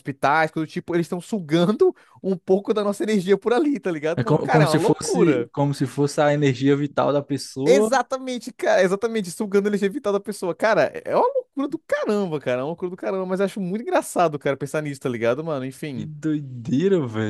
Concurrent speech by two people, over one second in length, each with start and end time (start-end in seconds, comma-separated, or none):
4.2-5.5